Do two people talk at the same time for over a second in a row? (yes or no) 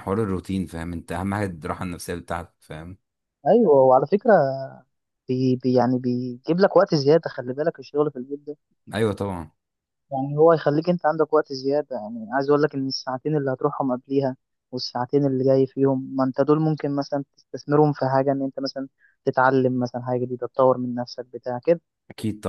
no